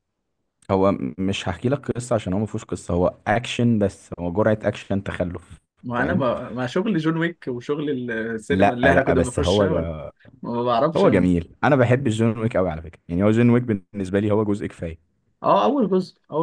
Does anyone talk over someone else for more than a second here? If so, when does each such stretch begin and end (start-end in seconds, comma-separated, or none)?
8.5-9.9